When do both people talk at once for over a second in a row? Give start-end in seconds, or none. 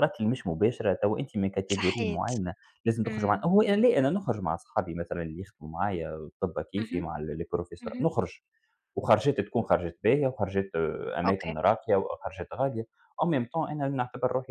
none